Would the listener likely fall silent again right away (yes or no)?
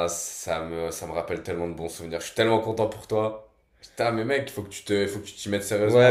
no